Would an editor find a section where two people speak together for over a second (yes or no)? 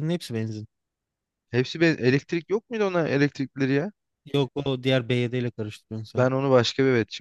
no